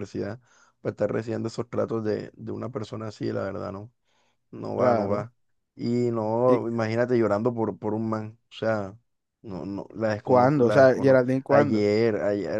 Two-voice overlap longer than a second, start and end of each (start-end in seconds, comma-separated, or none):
10.2-11.8